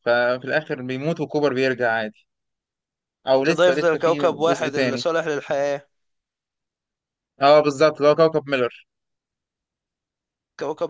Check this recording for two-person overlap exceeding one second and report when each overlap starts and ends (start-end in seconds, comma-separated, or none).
3.4-5.0